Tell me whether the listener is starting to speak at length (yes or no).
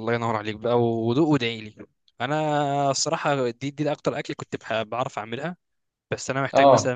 no